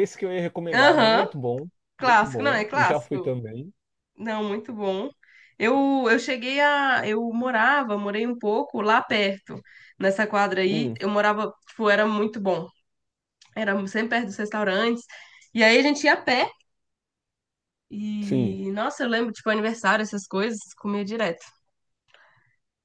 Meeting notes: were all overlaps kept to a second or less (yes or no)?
no